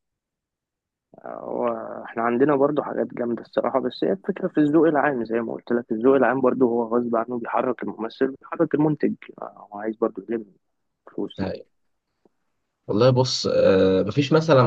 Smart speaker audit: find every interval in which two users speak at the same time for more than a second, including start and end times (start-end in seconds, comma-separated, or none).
none